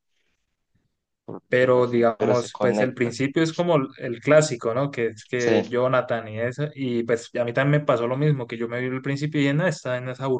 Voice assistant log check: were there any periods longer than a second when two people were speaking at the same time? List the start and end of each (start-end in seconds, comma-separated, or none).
1.5-3.2